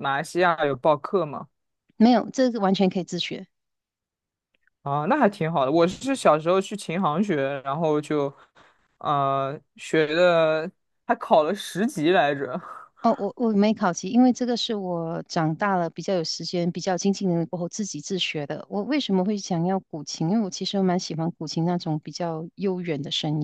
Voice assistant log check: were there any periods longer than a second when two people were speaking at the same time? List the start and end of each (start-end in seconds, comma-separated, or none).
none